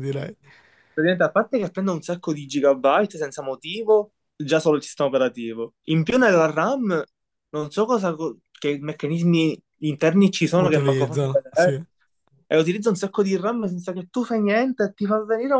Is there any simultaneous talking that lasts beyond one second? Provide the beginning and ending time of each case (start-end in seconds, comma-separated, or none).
10.6-11.8